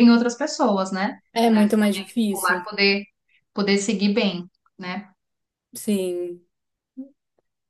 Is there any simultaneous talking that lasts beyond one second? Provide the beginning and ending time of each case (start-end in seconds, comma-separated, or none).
1.3-2.7